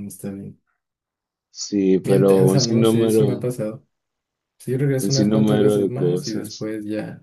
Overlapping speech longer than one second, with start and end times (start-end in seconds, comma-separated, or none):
2.0-3.5, 5.0-6.7